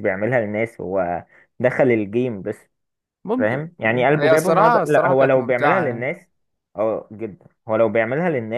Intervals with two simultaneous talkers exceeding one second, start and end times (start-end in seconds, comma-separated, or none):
3.4-6.1